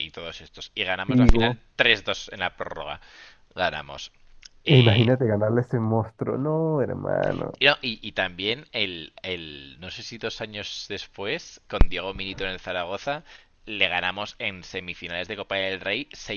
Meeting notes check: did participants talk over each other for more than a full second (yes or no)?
no